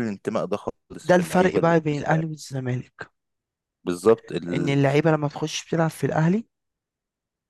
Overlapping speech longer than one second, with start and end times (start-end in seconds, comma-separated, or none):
1.0-2.2